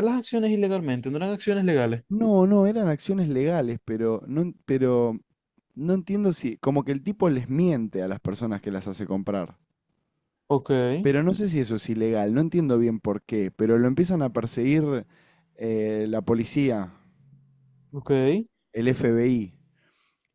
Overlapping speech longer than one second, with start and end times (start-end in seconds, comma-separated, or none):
none